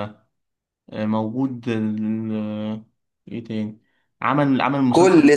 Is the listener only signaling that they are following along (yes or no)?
no